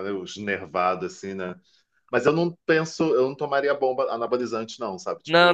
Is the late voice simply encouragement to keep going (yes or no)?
no